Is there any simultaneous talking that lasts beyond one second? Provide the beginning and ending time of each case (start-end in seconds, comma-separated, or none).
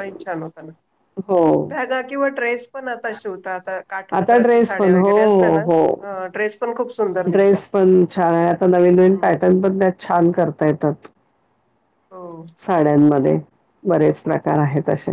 4.2-5.6